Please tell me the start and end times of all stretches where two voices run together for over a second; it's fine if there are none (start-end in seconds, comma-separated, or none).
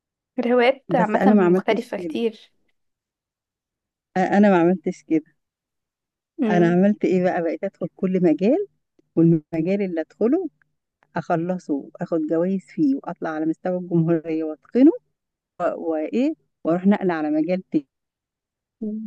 1.0-2.2